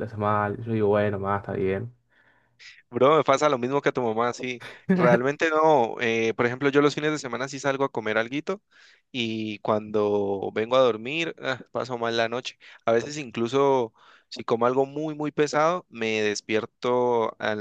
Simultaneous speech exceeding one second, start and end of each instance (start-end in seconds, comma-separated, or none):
none